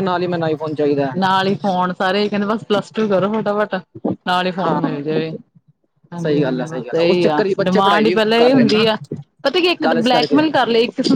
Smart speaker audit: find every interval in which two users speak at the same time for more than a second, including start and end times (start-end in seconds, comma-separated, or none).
6.2-8.8